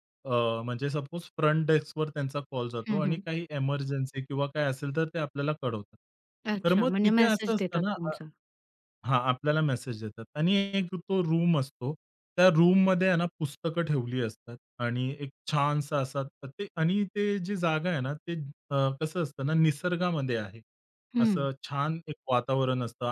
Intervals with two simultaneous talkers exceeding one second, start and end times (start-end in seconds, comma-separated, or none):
6.7-8.2